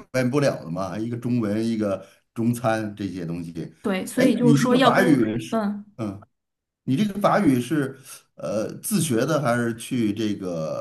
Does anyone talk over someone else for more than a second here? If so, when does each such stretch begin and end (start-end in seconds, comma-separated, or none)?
4.2-5.6